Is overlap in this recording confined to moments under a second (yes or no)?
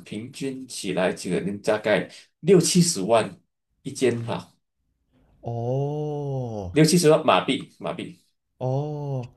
yes